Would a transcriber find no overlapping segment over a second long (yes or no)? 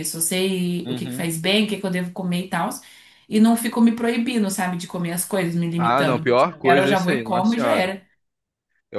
no